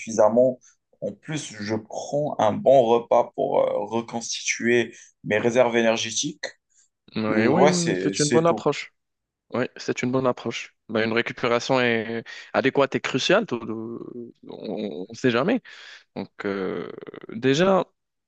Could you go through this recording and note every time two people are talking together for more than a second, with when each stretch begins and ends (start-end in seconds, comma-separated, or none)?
7.3-8.7